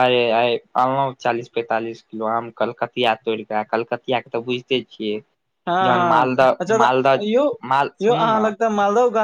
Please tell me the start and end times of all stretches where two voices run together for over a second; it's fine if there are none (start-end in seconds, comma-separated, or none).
5.7-7.4